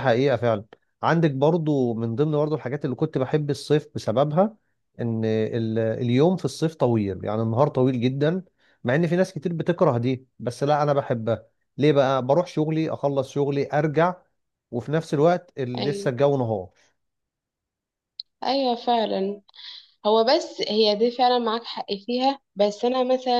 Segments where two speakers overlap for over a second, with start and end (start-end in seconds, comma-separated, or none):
none